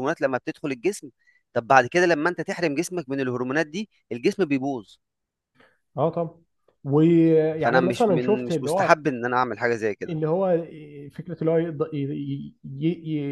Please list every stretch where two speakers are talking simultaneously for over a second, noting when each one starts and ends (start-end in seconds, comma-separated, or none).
7.6-8.9